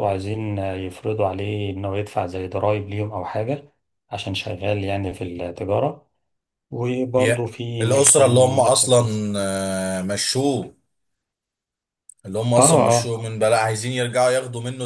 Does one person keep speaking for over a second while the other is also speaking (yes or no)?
yes